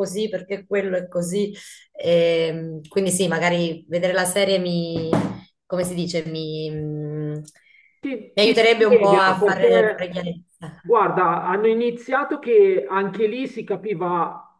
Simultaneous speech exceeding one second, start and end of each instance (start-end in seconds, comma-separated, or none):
8.4-10.2